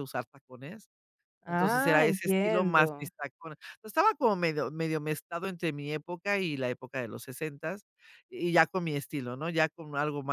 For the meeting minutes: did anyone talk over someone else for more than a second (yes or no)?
yes